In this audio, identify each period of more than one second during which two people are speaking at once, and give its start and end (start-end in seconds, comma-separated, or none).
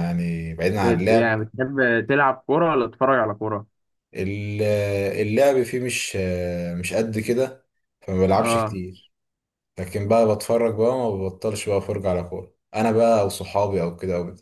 none